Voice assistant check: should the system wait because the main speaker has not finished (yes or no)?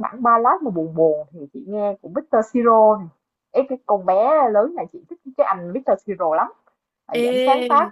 yes